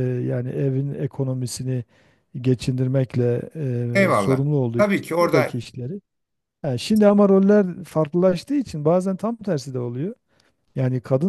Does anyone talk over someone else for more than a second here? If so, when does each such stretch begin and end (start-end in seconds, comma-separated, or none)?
3.9-5.5